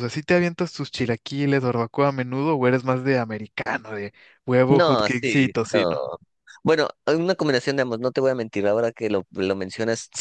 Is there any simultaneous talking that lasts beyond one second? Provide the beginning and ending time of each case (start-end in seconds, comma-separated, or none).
4.7-6.0